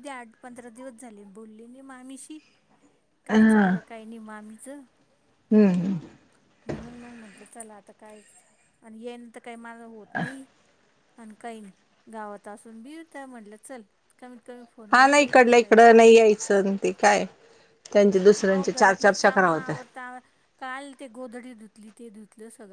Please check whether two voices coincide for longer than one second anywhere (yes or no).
yes